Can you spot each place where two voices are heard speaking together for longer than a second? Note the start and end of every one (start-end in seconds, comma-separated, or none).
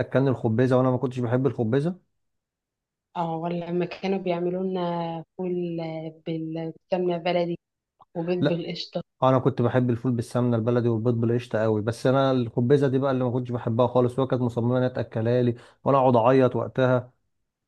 none